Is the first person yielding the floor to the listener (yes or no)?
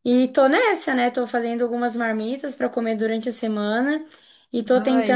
no